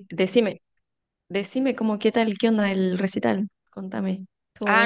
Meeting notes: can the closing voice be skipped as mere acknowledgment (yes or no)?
no